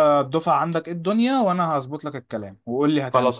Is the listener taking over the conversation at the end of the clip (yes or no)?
yes